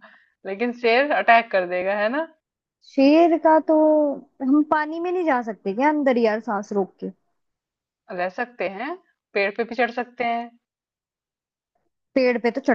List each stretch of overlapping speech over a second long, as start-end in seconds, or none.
none